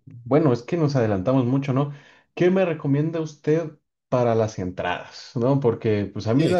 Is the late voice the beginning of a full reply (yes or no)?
no